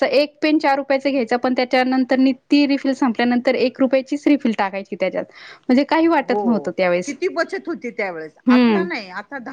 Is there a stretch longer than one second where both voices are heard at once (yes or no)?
no